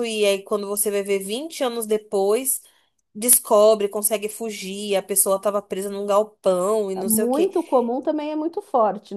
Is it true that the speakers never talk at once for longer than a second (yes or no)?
yes